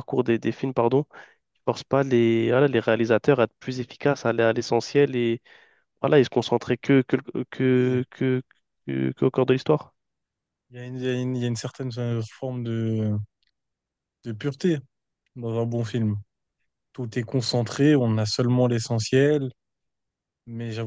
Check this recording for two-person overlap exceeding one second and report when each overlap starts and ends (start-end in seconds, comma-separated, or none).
none